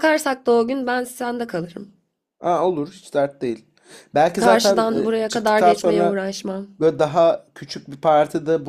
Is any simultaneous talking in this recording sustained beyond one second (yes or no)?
yes